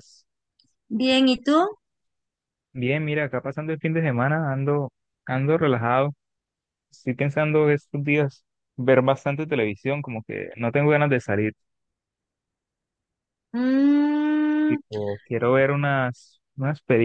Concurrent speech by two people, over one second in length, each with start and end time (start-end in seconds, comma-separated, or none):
none